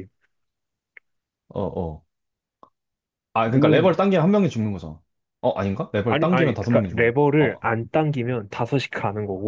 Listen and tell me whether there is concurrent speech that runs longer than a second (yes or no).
yes